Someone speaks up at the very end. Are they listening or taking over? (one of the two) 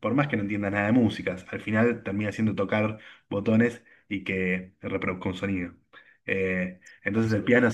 listening